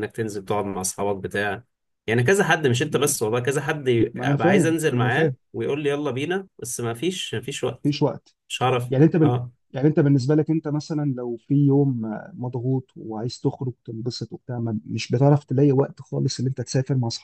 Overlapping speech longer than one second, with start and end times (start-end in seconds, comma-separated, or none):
4.1-5.3